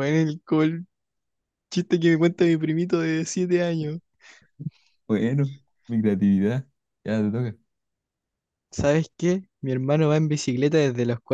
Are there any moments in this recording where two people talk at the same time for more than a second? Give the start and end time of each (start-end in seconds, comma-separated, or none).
none